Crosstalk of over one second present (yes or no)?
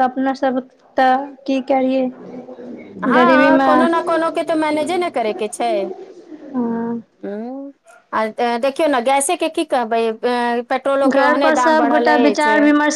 no